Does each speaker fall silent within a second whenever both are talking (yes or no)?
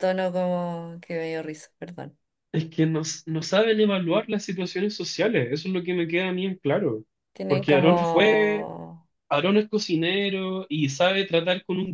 no